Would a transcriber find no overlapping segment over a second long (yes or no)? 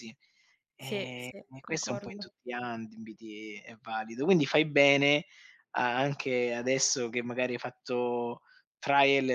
no